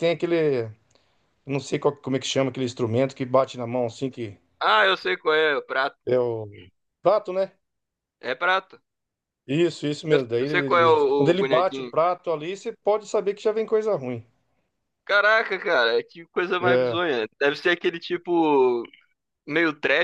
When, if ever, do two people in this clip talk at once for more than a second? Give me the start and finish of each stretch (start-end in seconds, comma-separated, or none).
10.1-11.9